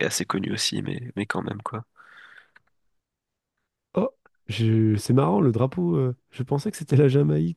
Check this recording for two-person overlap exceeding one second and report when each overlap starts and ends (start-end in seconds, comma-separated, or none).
none